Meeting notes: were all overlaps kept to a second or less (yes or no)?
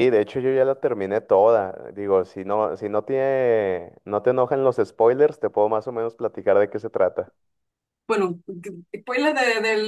yes